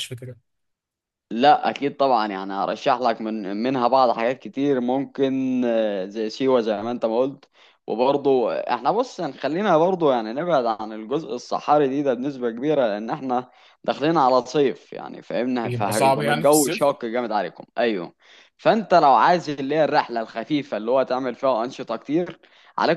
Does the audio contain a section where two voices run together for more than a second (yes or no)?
yes